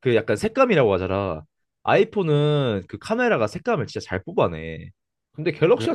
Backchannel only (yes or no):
yes